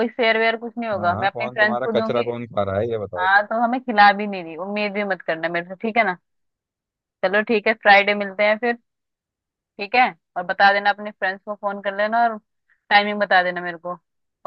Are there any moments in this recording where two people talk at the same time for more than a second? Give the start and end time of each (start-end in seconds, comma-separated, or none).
0.9-2.2